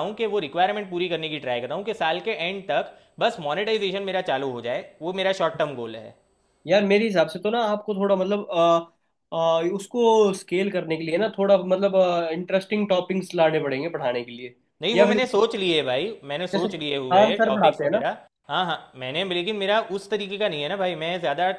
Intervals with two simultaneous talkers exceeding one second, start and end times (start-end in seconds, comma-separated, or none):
16.5-18.0